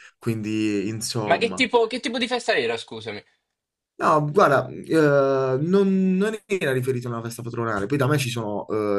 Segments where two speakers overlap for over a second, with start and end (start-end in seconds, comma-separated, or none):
none